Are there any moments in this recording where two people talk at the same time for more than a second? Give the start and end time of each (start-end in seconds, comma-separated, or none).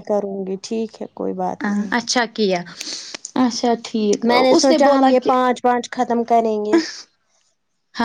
4.5-6.8